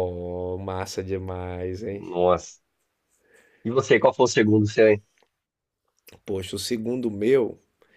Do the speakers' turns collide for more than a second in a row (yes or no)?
no